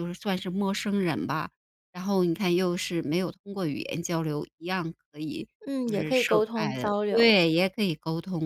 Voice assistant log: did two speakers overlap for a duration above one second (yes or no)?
yes